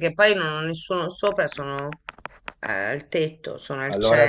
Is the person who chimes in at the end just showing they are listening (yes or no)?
no